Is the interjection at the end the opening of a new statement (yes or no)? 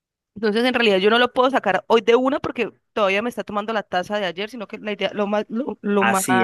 no